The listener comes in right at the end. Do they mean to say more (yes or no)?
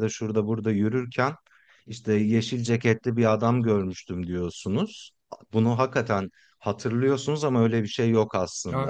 yes